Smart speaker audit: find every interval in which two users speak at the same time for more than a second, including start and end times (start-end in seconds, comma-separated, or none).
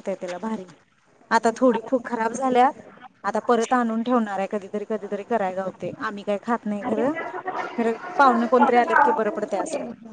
none